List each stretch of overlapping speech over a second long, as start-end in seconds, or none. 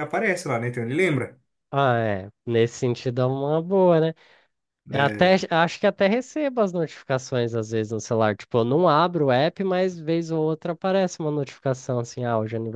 none